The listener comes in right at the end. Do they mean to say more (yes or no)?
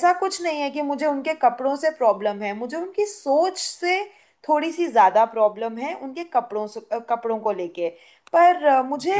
yes